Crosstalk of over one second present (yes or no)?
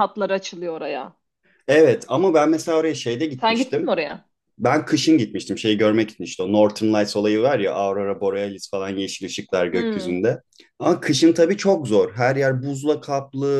no